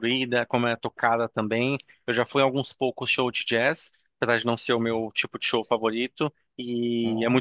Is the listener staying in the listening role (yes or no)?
yes